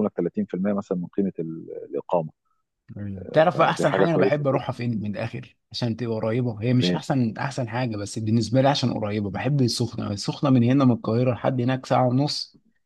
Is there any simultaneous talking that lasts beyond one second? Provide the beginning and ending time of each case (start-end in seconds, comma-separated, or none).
3.2-4.8